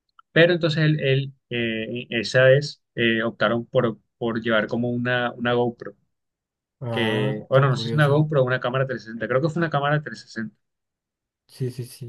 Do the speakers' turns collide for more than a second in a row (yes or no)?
yes